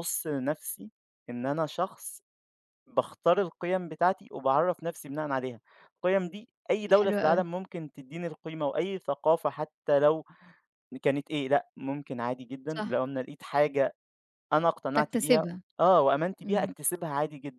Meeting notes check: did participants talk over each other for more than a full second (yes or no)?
no